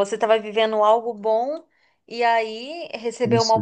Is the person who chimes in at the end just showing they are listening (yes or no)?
yes